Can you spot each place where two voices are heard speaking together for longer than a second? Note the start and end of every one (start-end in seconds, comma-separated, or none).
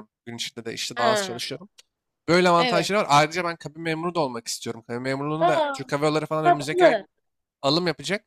none